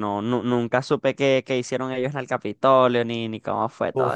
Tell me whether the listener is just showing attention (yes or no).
no